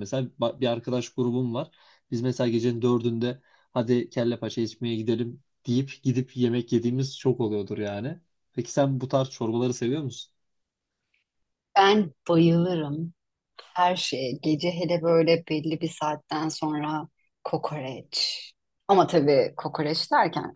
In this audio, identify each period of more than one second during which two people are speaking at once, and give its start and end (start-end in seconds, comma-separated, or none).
none